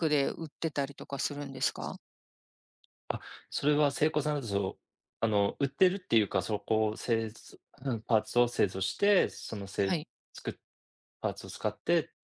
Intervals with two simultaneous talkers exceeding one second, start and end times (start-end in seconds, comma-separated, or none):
none